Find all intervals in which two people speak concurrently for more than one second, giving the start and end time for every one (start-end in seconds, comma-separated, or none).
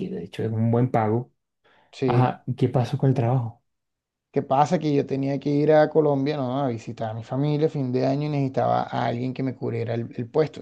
none